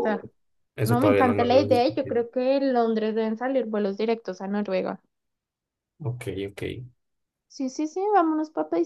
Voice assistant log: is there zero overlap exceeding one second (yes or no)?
no